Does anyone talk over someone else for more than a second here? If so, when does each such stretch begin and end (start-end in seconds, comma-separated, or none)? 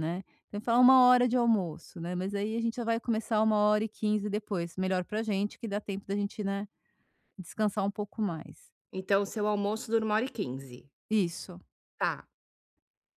none